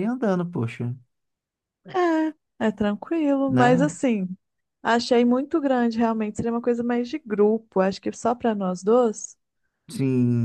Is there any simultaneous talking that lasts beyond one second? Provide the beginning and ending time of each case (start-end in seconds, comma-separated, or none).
none